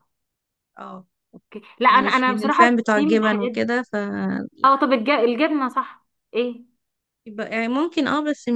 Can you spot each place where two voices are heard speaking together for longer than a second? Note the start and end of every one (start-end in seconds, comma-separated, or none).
1.9-3.7